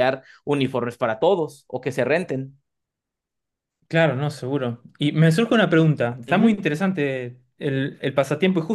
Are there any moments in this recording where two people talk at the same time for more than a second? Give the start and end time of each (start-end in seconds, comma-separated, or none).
none